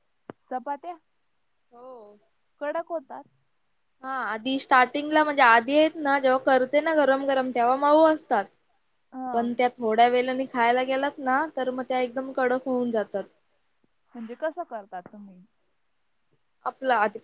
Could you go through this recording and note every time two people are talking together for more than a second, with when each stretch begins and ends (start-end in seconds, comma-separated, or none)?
none